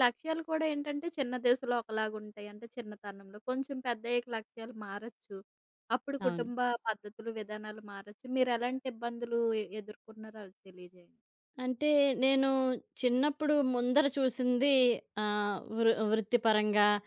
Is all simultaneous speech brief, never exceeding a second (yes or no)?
yes